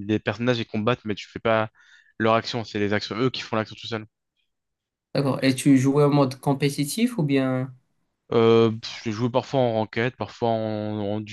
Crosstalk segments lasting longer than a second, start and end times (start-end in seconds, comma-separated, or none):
none